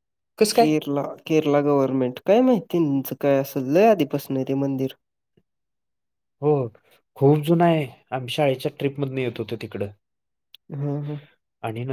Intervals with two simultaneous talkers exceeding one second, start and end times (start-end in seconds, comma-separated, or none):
none